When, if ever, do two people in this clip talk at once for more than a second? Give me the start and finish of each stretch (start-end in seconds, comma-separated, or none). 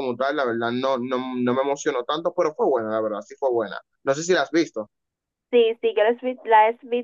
none